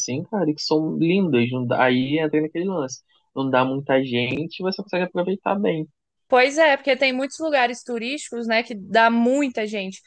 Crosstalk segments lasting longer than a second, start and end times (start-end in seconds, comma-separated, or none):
none